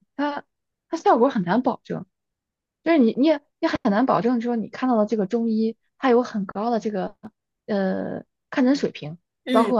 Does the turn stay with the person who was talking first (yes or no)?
yes